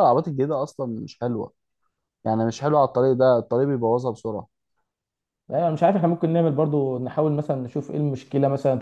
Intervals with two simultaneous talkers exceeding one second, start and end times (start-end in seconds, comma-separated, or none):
none